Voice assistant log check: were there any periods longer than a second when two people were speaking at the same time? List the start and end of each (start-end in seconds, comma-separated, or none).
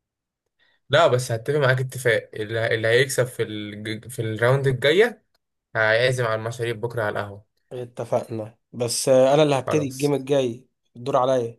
none